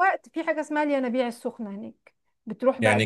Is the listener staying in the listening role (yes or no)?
no